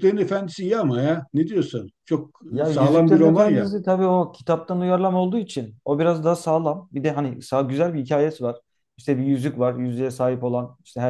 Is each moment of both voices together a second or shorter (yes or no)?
no